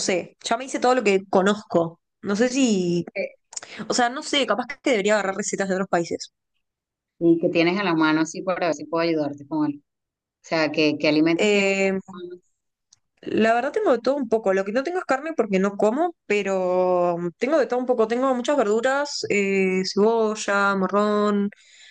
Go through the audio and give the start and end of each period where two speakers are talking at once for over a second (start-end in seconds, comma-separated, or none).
none